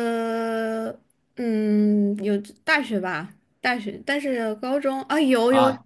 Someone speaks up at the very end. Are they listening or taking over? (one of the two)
taking over